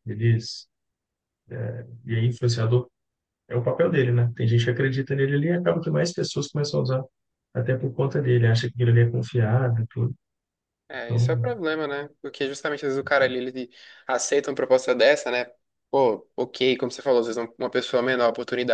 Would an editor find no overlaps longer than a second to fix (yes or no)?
yes